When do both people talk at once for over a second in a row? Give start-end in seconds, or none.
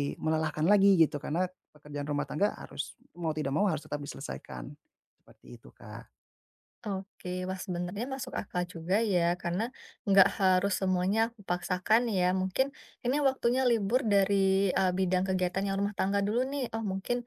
none